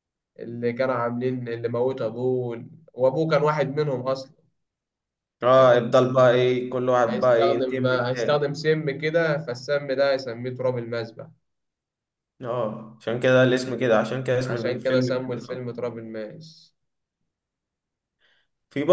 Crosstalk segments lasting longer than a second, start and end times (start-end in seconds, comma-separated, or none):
7.1-8.5, 14.4-15.6